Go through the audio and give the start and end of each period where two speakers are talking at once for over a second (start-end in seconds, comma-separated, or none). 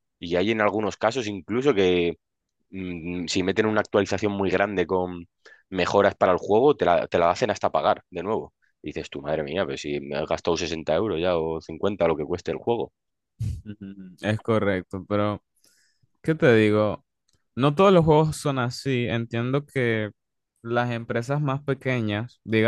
none